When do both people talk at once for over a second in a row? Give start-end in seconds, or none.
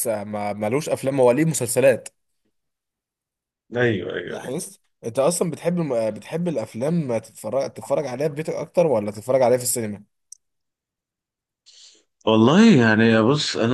none